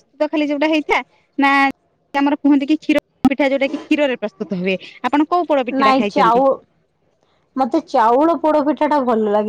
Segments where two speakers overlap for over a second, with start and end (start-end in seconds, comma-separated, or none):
none